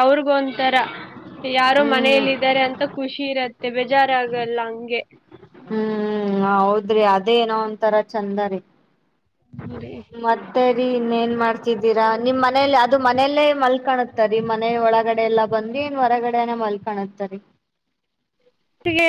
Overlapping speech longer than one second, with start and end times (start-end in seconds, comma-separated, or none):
none